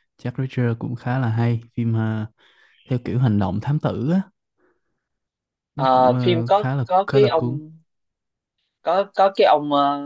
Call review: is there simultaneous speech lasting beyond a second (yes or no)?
yes